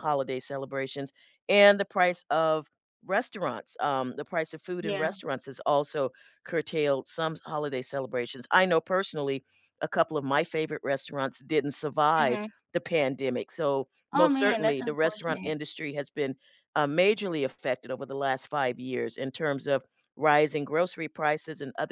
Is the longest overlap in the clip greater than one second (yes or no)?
yes